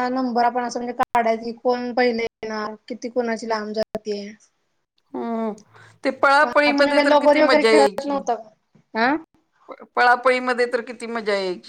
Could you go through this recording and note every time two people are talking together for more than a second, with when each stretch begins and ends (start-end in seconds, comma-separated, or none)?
6.9-8.2